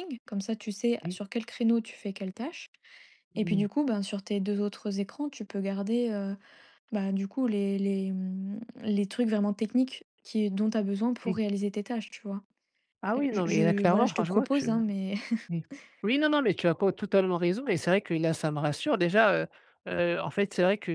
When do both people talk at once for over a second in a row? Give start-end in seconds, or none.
13.2-14.7